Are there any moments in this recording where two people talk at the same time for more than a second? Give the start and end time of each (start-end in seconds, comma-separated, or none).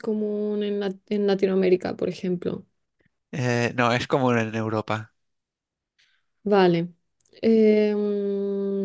none